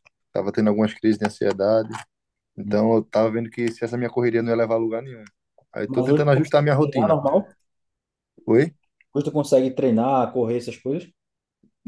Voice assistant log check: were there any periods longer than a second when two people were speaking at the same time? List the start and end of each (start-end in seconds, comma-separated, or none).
5.9-7.2